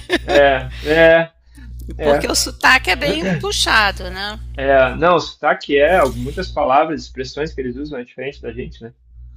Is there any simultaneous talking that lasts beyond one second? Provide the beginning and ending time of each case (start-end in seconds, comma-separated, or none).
none